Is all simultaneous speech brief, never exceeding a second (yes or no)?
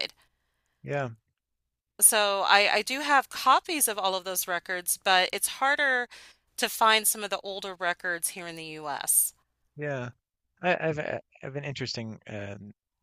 yes